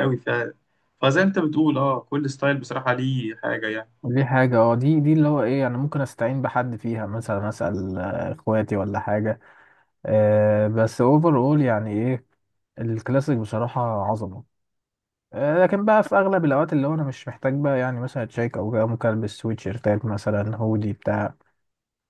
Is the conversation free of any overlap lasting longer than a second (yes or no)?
yes